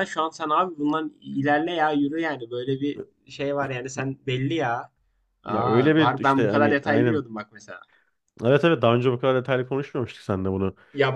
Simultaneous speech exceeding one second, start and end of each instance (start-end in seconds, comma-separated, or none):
5.5-7.3